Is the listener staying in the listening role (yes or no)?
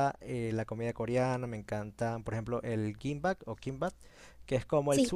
yes